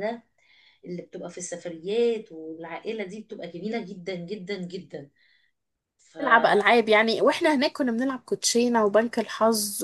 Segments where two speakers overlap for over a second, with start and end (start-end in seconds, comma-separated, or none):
none